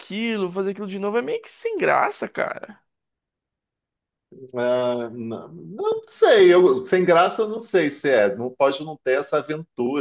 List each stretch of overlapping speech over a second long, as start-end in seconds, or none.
none